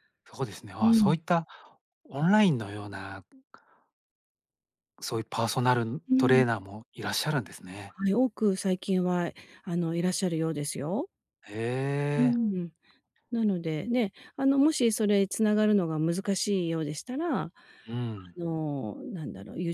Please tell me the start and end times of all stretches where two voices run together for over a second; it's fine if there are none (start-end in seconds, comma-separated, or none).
none